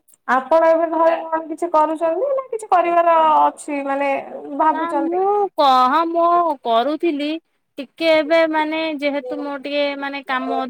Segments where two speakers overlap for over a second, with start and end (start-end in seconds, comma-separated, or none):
none